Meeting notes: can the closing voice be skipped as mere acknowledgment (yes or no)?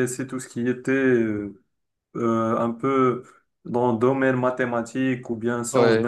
yes